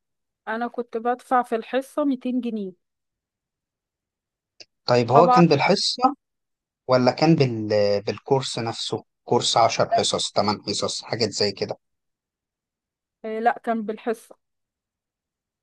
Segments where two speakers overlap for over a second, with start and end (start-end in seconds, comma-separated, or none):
none